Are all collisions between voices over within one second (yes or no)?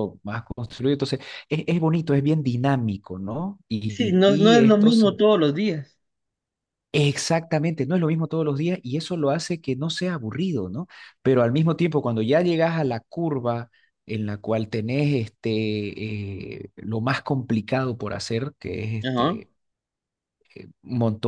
no